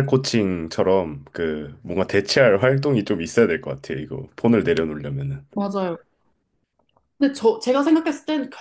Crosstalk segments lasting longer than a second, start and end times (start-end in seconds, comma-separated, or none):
none